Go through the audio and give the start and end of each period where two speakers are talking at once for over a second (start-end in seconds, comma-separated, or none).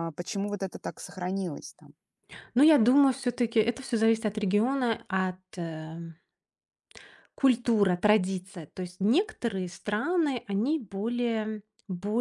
none